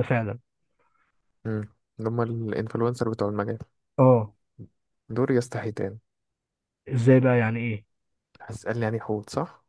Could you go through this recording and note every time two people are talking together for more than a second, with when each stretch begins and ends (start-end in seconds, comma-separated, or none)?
none